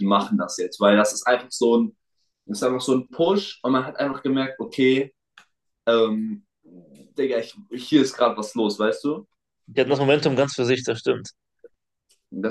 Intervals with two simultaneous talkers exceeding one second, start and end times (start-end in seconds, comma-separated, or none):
none